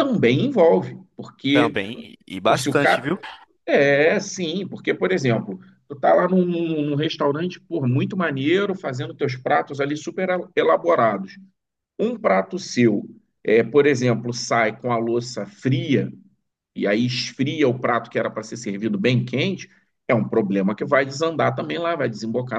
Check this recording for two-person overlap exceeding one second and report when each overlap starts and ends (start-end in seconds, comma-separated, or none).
none